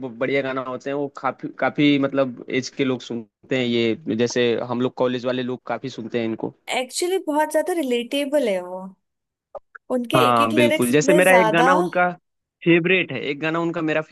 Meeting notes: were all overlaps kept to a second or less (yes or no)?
no